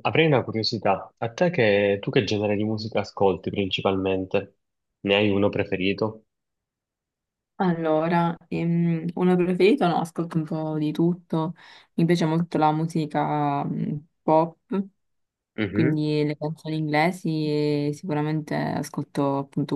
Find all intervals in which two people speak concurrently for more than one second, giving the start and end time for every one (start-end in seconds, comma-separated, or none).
none